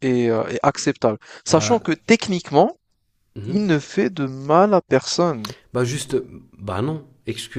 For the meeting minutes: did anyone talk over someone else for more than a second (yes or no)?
no